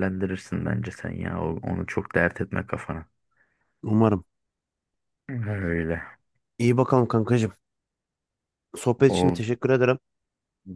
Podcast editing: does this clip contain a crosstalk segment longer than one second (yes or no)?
no